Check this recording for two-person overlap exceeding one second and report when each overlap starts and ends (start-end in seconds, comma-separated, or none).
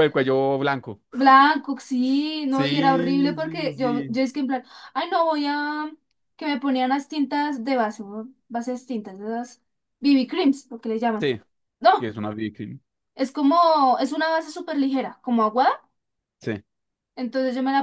2.5-4.2